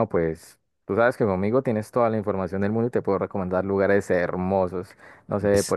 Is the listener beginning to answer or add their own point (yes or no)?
yes